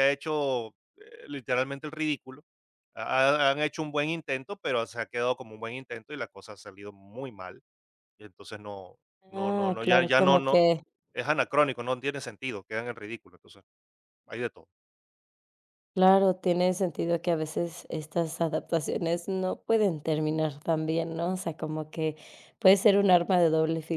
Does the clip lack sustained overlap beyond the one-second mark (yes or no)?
no